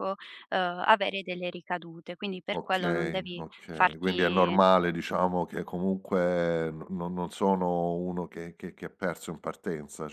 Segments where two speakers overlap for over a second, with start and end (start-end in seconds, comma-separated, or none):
2.5-4.6